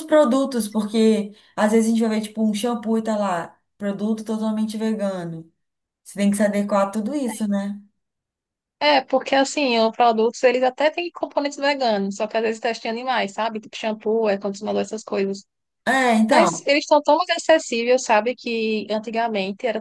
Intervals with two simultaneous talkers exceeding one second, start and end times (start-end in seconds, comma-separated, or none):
none